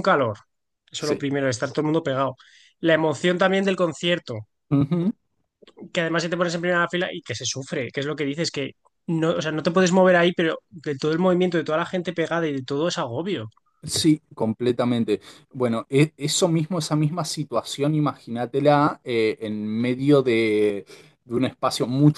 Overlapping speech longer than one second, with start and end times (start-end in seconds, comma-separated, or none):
none